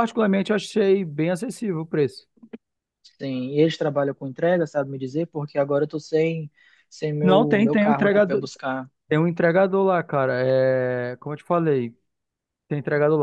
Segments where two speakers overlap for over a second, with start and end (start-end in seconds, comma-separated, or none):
7.2-8.4